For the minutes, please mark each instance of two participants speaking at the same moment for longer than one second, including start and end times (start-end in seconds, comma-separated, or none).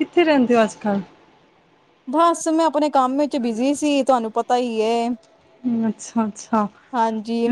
none